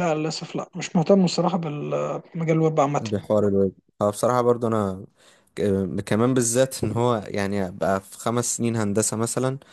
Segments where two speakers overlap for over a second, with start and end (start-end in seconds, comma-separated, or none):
none